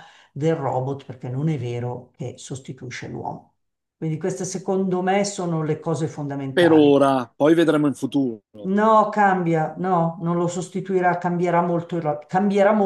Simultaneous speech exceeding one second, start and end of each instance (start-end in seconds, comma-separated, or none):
none